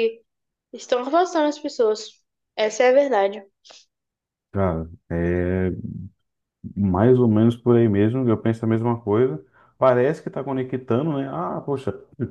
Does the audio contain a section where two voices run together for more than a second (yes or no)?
no